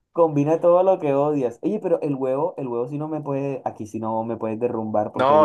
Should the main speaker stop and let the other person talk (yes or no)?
yes